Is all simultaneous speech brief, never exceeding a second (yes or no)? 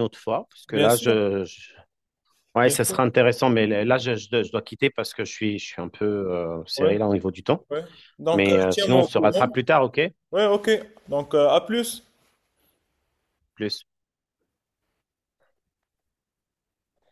no